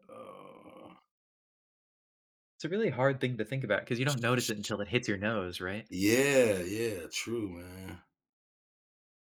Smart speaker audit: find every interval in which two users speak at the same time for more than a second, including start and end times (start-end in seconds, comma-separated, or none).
none